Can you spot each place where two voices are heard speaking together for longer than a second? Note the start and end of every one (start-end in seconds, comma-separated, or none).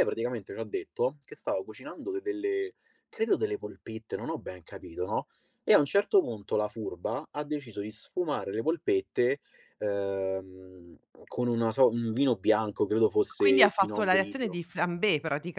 13.3-14.6